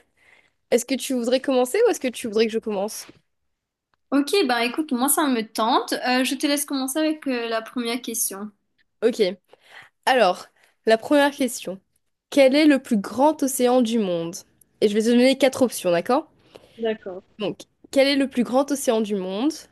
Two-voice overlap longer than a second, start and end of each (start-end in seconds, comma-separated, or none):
none